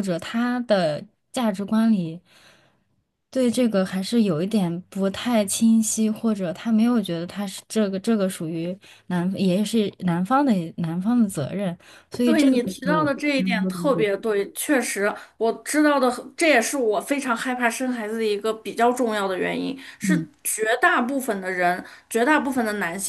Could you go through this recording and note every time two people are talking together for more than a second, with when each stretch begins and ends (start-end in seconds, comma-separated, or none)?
12.2-14.1